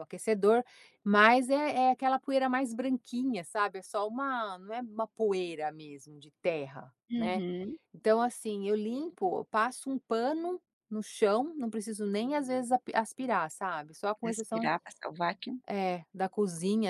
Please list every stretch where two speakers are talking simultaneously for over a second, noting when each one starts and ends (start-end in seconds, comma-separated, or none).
none